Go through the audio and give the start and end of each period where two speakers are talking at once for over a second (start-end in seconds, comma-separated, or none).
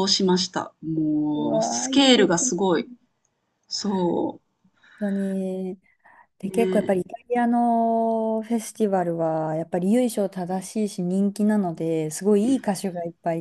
1.3-2.8